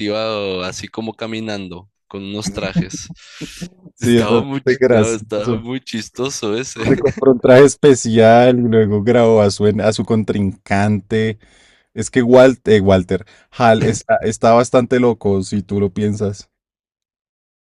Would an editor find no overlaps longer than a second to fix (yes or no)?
no